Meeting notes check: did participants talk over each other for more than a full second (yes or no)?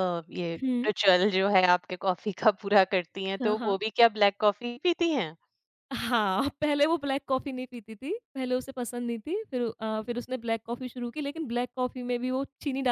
no